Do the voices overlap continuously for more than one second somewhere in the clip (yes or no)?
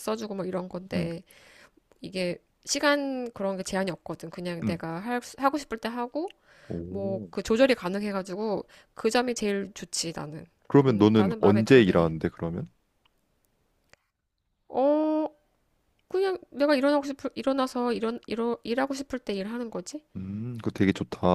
yes